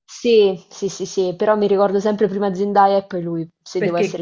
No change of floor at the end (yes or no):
no